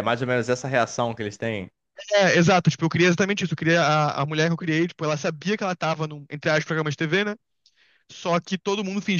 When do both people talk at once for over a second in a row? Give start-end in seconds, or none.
none